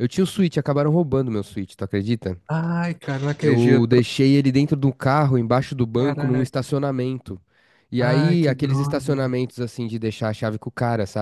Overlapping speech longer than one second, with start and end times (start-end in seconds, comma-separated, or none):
8.0-9.3